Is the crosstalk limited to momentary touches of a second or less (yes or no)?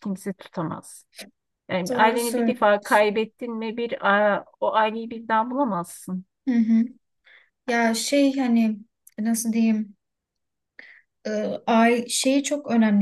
no